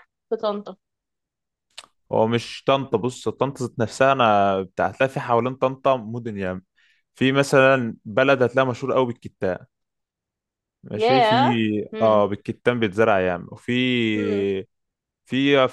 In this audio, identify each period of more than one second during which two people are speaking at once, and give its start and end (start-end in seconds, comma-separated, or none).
none